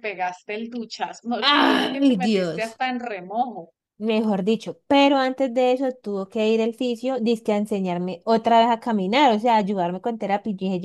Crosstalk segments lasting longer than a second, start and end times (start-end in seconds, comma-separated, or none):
1.5-2.8